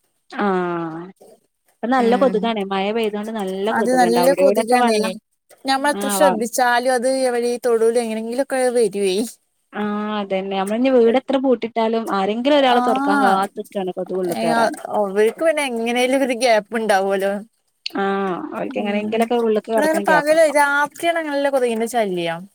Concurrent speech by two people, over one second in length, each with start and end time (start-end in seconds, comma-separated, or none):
none